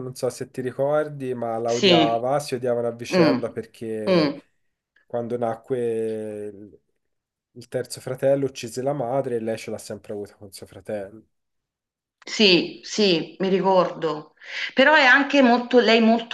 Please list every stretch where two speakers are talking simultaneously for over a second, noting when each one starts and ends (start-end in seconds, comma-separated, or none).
none